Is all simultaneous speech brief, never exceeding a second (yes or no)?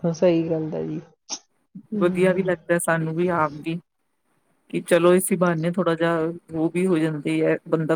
yes